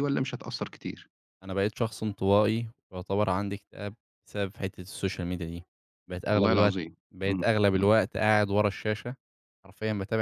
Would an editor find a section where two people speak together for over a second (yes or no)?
yes